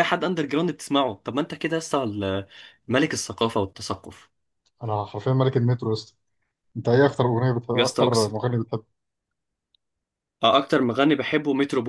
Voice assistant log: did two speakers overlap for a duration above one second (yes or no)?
no